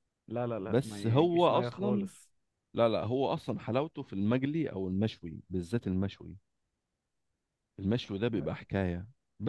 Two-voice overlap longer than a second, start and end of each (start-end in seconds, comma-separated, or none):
0.7-2.1